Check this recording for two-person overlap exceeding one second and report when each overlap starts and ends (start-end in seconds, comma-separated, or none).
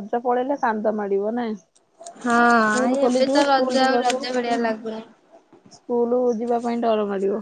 2.6-4.2